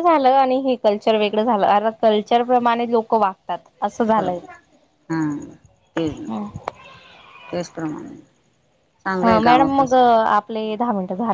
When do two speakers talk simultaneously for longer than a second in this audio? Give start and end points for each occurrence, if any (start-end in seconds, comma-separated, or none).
9.2-10.8